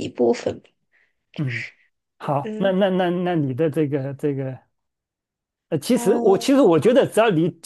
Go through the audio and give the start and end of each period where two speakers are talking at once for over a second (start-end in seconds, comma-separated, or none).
none